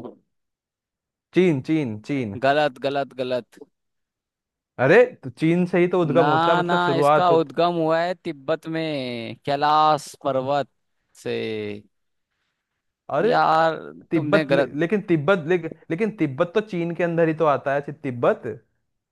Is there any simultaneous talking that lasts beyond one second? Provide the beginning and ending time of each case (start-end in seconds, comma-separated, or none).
6.2-7.5